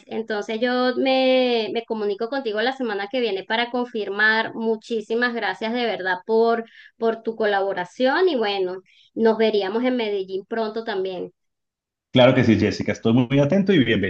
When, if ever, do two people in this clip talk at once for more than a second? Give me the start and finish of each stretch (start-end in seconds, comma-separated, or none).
none